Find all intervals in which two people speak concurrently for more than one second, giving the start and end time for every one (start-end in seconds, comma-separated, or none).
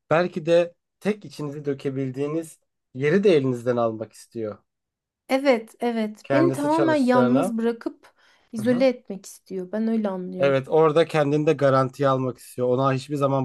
6.2-7.5